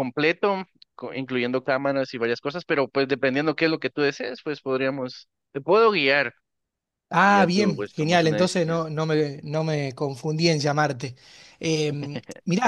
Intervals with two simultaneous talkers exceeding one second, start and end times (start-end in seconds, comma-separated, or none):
7.2-8.8